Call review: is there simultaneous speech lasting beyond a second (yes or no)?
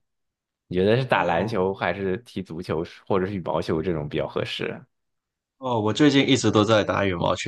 no